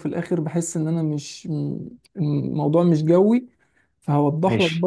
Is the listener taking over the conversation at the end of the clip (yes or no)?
no